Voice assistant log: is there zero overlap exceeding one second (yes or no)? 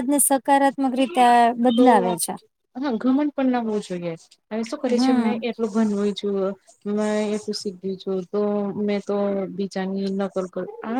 yes